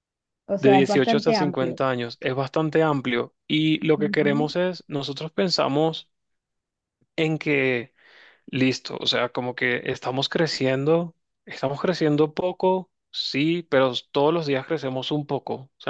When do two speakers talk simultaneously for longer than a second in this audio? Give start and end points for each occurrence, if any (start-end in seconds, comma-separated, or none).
0.6-1.8